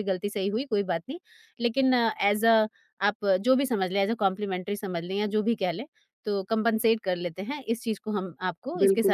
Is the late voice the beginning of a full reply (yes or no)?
yes